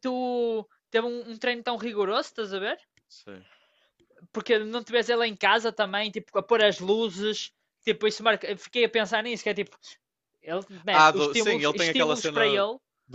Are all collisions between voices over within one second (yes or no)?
no